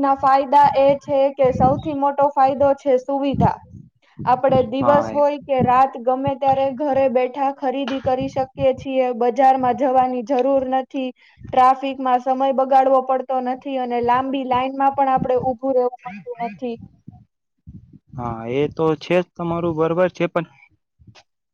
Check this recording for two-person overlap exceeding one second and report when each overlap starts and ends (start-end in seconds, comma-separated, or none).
none